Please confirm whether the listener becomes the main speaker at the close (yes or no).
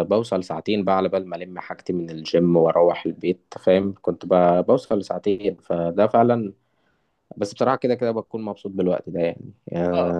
yes